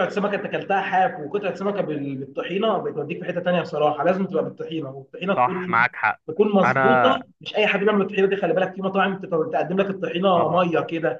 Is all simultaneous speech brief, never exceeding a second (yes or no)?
yes